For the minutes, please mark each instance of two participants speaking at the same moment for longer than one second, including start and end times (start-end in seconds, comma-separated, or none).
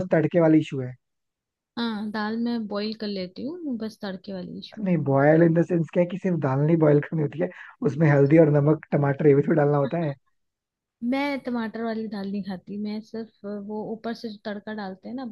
none